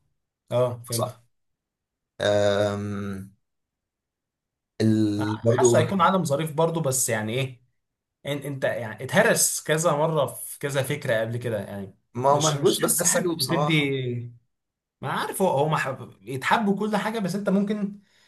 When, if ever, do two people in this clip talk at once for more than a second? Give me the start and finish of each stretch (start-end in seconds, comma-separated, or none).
12.2-13.9